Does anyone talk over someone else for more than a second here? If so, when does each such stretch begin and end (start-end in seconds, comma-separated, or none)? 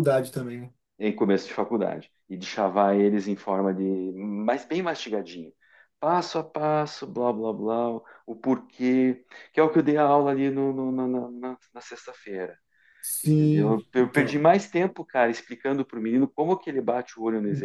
13.2-14.5